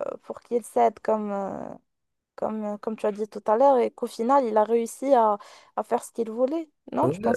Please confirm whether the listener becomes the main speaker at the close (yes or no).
yes